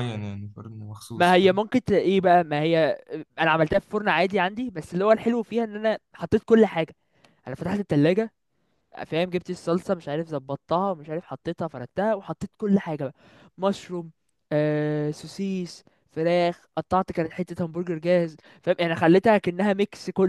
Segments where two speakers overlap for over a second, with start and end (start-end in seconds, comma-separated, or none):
none